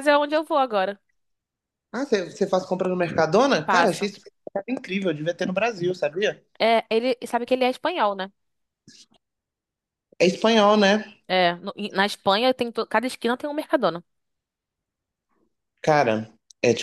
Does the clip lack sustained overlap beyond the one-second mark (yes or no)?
yes